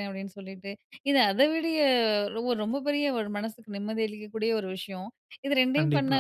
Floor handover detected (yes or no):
no